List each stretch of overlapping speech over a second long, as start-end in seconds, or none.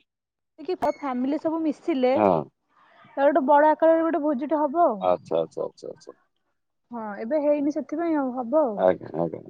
none